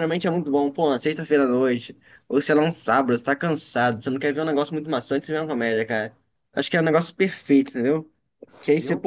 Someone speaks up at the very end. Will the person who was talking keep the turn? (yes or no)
yes